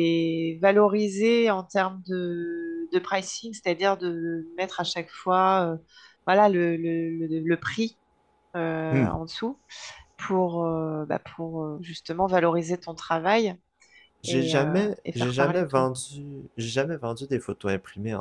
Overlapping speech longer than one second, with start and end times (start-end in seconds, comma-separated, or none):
14.3-15.9